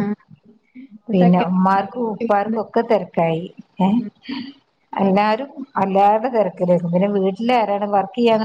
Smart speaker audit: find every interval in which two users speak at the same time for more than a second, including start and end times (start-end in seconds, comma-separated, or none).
1.1-2.6